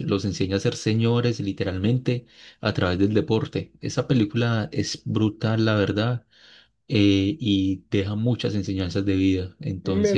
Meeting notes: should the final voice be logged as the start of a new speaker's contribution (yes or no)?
yes